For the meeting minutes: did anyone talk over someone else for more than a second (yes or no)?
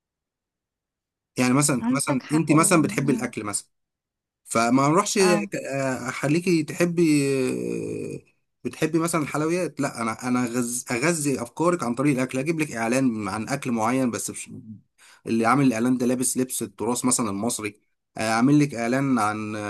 yes